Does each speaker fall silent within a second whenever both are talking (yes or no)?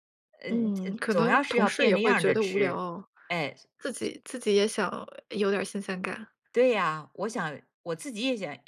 no